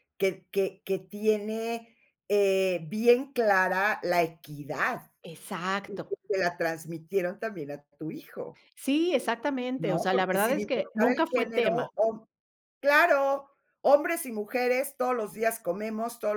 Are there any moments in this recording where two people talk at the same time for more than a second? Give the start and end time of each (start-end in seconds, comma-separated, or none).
9.8-11.9